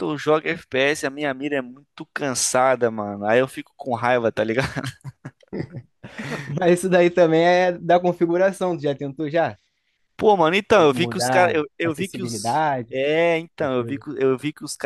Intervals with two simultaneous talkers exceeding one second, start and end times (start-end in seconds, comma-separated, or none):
10.9-13.0